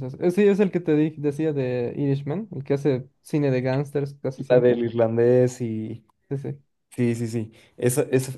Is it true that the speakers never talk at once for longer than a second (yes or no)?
yes